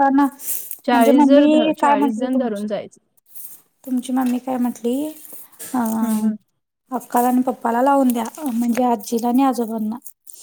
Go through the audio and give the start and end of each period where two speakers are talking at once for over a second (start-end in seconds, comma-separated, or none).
0.9-2.7